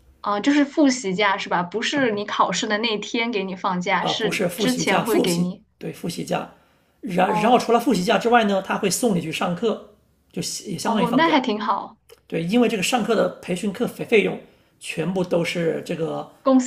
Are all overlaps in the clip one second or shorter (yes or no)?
no